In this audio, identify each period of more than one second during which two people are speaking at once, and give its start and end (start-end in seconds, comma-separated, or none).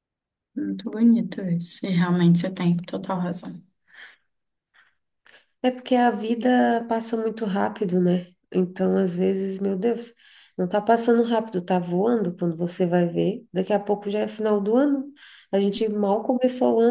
none